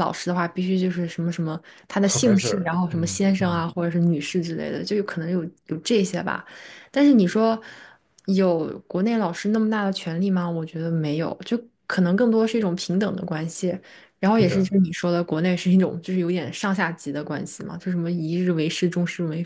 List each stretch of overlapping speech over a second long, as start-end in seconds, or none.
2.0-3.6